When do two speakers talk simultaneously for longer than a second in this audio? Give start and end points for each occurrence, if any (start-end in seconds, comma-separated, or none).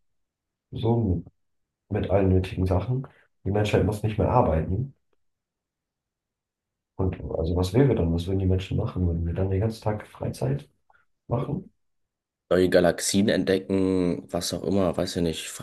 none